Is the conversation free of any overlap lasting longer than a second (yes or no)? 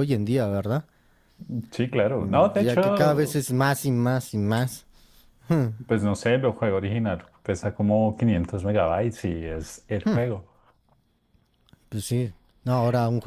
no